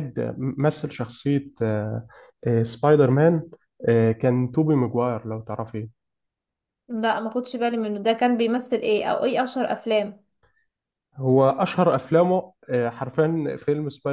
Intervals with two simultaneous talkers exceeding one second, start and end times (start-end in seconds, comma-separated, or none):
none